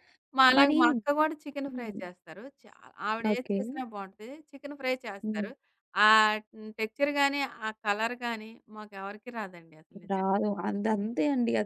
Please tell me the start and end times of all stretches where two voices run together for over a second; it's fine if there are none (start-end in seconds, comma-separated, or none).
none